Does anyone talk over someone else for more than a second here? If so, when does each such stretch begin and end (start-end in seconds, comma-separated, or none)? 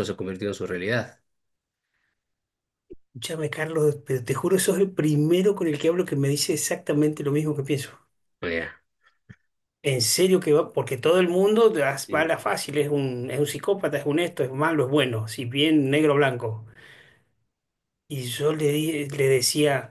none